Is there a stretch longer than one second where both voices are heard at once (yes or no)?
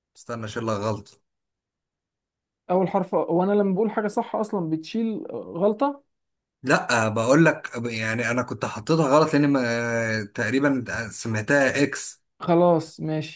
no